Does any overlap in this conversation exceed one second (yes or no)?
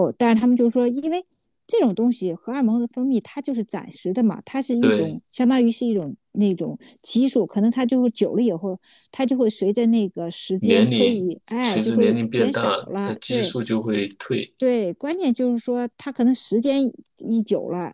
yes